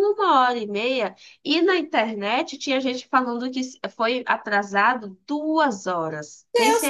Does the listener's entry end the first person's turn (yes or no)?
yes